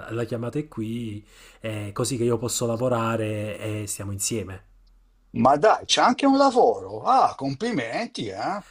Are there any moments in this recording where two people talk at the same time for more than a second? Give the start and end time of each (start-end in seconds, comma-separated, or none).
none